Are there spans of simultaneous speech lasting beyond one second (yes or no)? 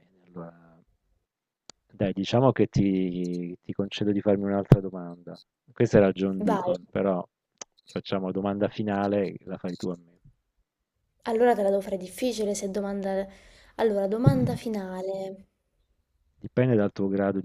no